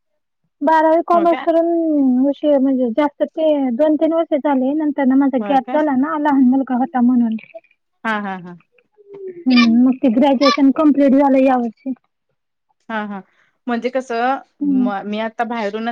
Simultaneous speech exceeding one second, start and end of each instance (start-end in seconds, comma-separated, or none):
none